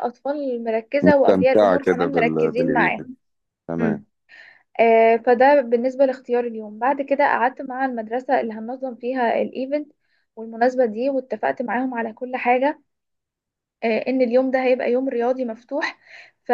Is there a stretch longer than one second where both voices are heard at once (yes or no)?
yes